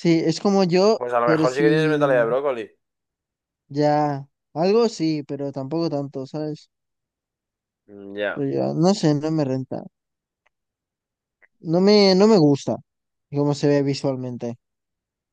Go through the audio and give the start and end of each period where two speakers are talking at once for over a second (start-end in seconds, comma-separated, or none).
1.0-2.3